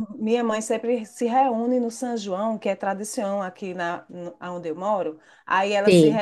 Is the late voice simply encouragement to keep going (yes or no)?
yes